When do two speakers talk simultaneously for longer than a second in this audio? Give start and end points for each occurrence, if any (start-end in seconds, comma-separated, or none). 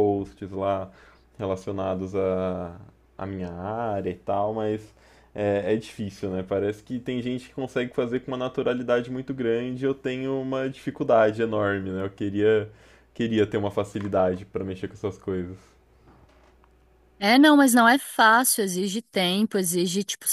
none